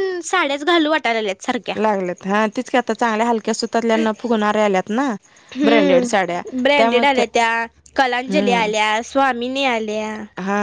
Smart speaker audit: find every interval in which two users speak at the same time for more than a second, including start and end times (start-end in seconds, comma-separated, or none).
5.6-7.0